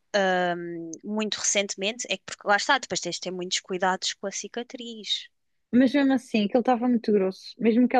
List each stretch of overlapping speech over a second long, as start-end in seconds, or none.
none